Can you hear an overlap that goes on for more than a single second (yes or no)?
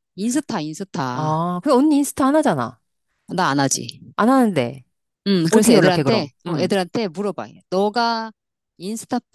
yes